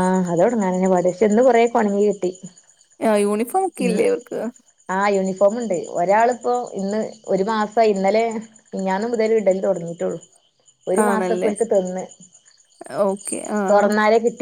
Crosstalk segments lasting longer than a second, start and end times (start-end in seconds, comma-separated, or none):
none